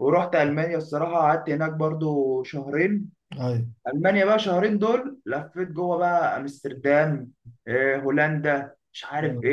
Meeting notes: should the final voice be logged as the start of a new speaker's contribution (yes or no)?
no